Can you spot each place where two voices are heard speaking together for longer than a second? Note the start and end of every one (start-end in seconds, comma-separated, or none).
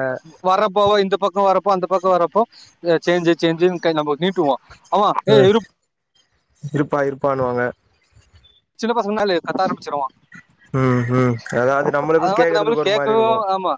none